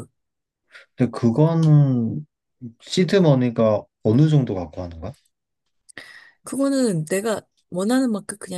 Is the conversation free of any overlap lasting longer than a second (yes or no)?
yes